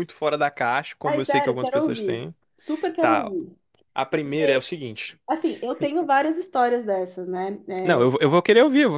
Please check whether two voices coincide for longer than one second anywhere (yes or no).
yes